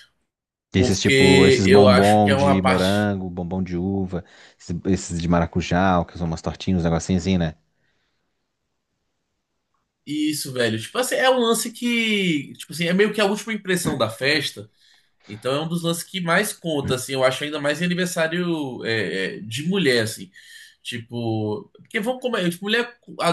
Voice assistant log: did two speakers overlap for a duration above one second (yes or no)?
yes